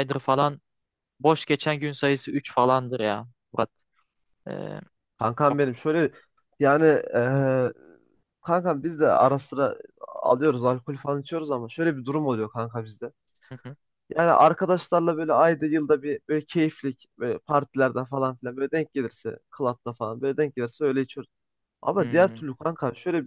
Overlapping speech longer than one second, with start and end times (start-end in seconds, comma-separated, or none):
none